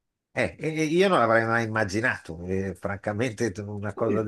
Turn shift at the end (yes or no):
no